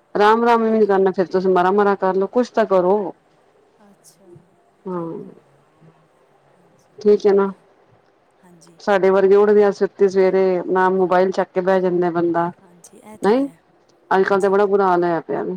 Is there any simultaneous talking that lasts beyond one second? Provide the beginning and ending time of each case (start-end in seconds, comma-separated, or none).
none